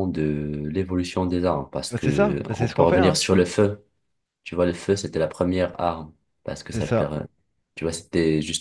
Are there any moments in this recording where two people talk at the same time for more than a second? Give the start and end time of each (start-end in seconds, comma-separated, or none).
1.9-3.2